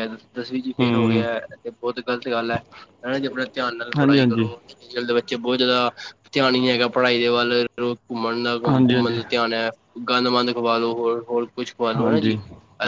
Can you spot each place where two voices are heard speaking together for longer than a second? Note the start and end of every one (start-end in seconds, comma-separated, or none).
none